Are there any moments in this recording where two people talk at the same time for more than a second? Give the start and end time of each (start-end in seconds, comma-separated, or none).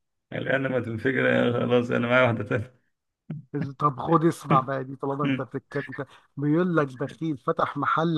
none